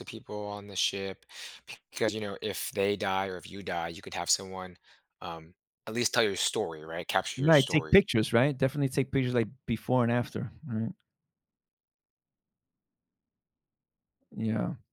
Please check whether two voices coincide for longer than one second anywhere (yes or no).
no